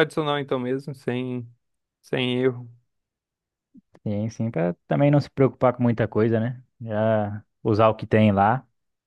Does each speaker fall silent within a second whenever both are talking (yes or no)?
yes